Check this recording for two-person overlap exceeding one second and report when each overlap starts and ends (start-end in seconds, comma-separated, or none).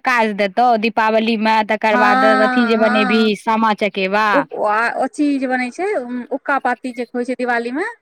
1.9-3.3